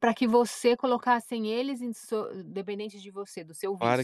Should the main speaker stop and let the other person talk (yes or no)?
yes